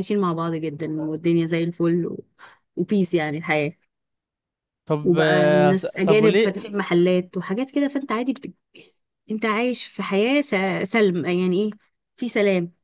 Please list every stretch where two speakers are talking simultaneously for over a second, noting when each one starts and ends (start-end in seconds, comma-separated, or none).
5.0-6.5